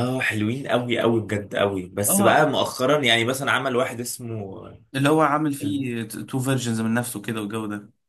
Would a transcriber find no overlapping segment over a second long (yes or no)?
yes